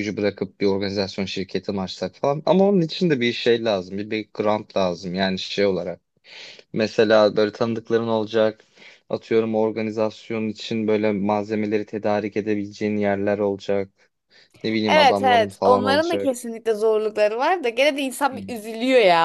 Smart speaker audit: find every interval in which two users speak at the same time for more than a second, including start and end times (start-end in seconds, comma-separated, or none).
14.9-16.3